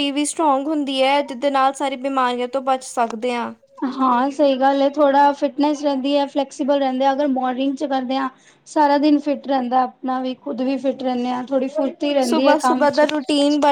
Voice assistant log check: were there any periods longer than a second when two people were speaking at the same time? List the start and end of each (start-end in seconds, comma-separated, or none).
none